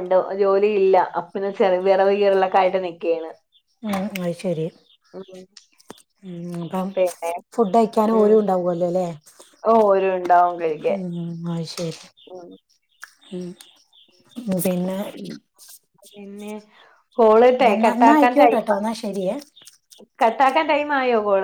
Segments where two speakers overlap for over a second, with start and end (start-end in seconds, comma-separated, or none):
17.5-18.8